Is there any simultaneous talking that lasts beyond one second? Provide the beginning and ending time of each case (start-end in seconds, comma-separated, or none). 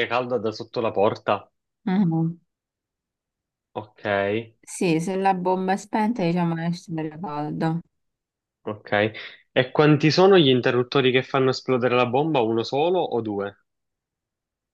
none